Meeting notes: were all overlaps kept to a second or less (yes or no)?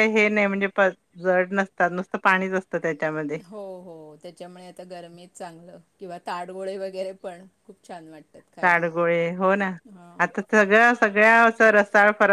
yes